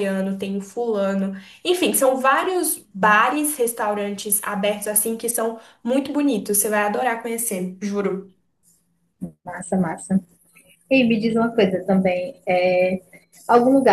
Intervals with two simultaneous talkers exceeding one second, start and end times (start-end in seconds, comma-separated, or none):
none